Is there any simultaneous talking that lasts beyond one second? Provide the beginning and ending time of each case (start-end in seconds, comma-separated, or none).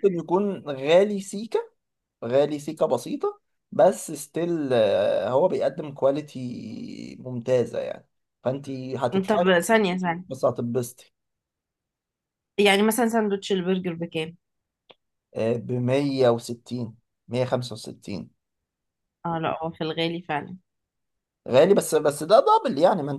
none